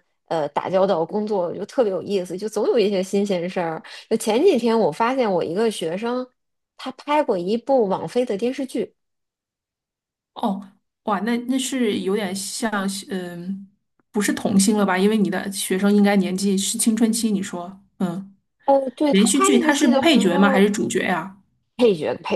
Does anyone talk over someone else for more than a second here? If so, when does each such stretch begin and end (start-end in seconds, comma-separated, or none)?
19.1-20.7